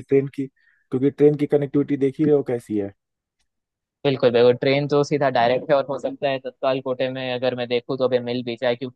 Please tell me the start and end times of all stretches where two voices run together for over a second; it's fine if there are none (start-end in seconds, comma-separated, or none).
none